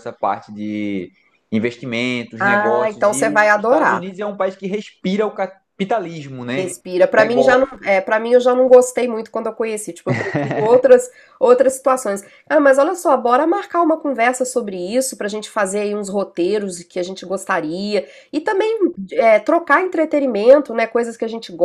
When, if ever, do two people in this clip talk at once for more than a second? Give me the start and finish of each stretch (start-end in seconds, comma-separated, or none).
2.4-4.0